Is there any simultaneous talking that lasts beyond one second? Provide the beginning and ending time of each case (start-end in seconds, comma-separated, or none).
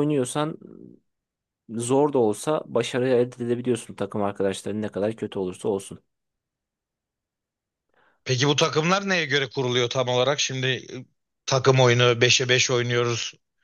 none